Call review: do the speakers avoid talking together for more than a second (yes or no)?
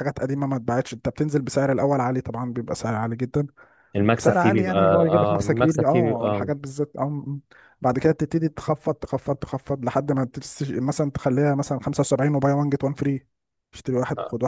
no